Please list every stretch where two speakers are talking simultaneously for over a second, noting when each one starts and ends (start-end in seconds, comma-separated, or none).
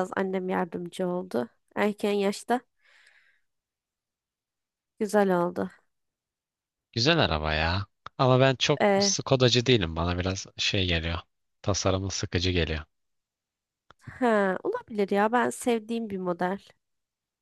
none